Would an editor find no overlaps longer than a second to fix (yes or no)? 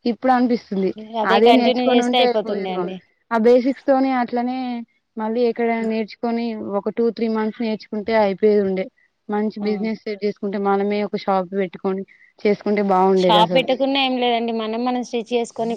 no